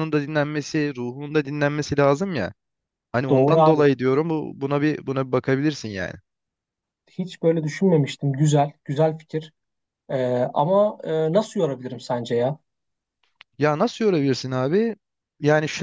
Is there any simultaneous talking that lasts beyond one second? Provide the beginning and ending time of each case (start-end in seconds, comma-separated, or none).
none